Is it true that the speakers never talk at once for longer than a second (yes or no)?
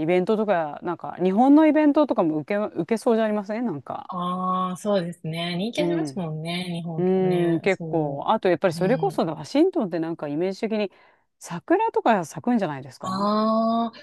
no